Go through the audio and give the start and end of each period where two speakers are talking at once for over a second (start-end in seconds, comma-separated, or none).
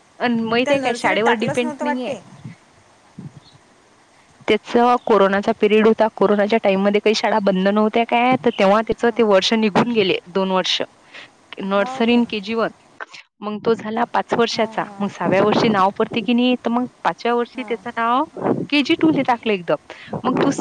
0.7-2.1